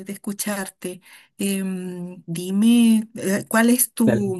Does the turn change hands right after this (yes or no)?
yes